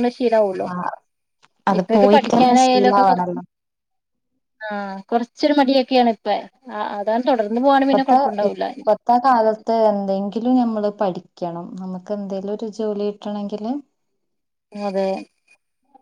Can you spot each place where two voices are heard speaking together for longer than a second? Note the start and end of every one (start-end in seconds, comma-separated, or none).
1.8-3.4